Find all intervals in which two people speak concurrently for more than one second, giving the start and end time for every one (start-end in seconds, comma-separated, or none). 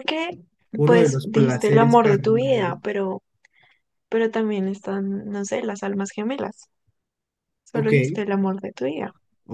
0.8-2.8